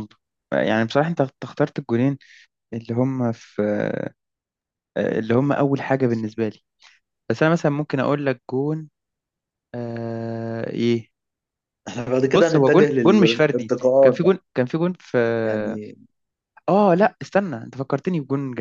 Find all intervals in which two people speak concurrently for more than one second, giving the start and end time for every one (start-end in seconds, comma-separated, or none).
12.3-14.3